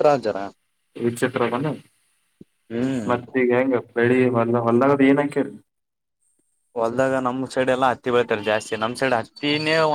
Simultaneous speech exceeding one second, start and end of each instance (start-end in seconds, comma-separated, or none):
none